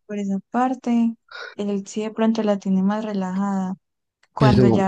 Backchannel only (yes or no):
yes